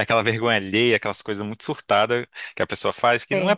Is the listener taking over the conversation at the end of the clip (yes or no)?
no